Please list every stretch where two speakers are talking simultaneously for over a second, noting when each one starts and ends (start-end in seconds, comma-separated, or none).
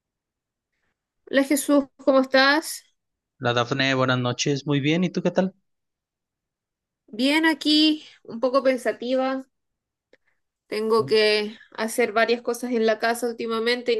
none